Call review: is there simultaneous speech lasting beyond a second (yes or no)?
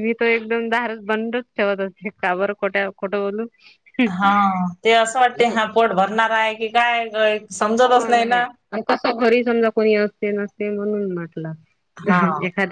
no